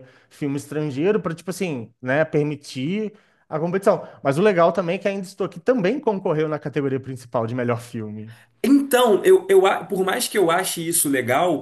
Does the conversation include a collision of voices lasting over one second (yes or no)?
no